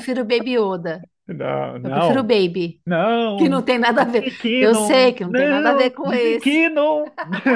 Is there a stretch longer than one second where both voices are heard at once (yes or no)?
yes